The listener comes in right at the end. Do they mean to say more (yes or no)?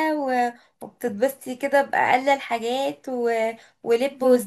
no